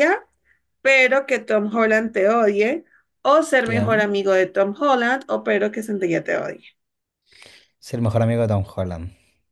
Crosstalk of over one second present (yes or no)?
no